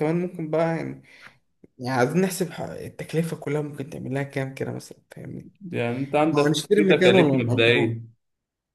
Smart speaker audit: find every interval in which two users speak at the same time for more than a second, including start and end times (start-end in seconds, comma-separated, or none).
6.3-8.0